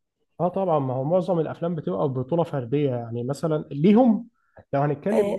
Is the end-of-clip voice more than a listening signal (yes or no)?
no